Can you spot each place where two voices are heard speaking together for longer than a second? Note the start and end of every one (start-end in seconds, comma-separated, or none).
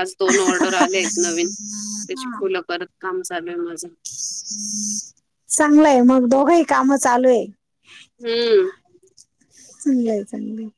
none